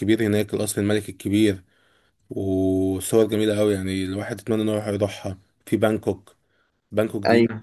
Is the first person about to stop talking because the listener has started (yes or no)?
no